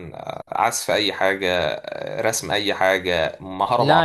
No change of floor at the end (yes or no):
no